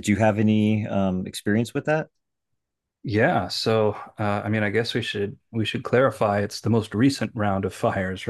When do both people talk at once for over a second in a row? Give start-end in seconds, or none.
none